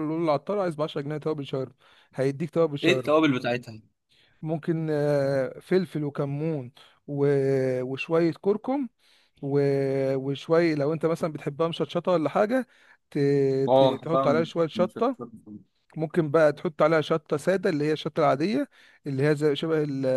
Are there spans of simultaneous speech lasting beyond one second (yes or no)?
yes